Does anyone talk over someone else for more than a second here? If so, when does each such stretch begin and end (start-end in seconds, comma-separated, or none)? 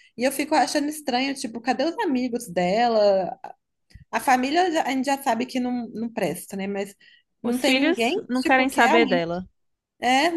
7.4-9.3